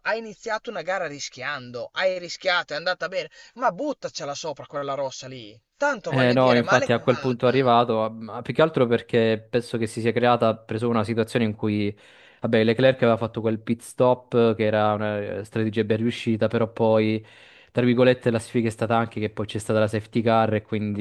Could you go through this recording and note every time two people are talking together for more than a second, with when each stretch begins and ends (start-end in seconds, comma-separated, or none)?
6.1-7.7